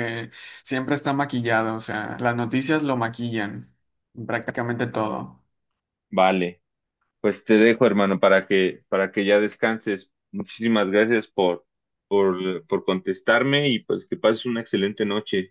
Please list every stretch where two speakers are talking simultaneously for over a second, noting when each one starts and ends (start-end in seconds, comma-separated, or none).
none